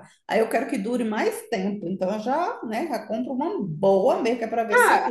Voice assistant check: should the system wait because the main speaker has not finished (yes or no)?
no